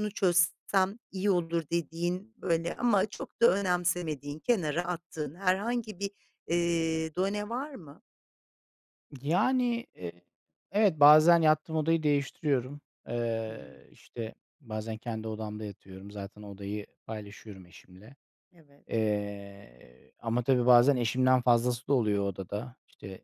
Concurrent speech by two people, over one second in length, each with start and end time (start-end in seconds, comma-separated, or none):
none